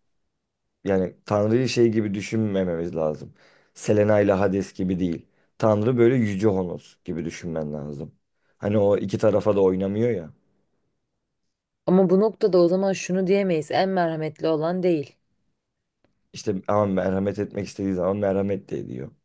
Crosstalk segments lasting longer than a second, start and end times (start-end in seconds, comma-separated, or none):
none